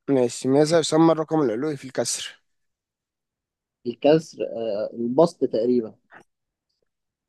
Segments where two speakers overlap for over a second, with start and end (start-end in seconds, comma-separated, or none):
none